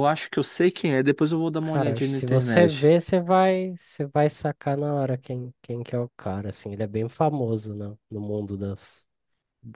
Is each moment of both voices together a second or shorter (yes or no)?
no